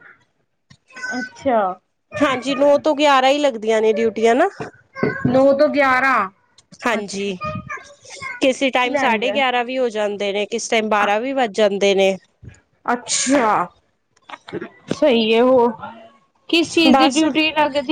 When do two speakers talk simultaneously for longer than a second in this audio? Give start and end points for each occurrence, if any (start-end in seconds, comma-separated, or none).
none